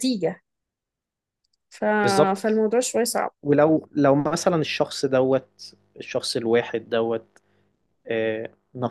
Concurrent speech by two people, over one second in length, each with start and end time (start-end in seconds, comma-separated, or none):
none